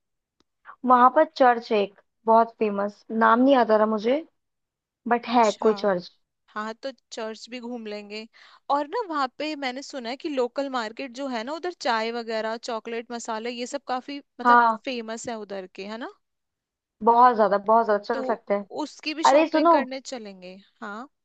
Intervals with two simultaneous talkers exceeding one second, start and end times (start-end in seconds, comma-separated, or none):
none